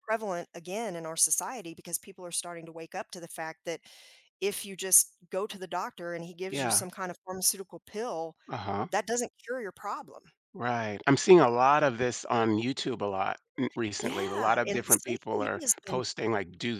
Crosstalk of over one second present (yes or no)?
yes